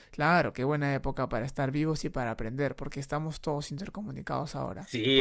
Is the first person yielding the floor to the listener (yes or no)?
yes